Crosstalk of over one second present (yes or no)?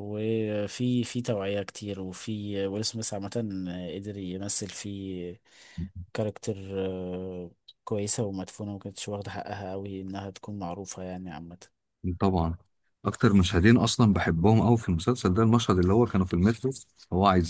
no